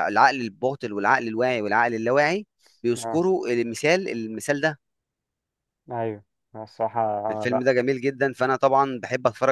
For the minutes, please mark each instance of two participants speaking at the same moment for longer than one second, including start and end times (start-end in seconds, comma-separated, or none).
none